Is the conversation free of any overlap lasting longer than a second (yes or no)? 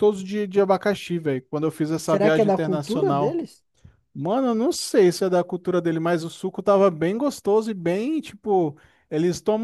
no